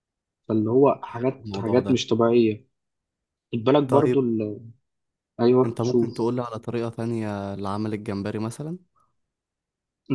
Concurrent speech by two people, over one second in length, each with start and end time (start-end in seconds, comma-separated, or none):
none